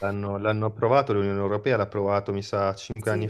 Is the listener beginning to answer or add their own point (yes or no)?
no